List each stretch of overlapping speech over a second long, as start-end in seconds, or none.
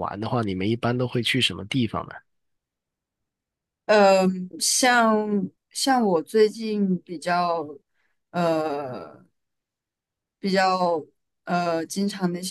none